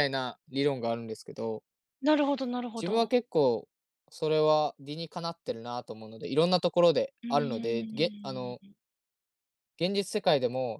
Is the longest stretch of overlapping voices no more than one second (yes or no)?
no